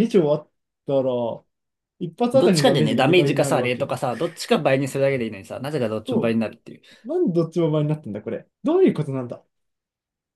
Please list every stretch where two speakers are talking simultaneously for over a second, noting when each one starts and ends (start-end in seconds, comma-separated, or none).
2.3-3.9